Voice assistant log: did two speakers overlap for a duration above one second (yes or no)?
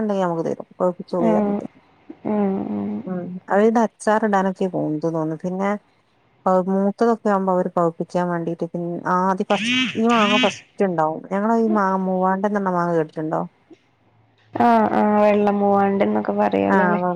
no